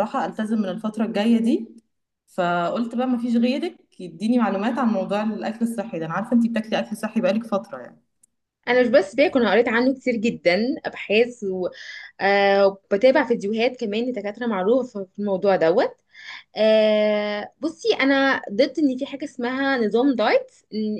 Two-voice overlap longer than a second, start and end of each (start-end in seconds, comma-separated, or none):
none